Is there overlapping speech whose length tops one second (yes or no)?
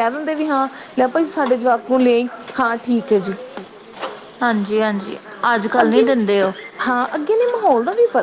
no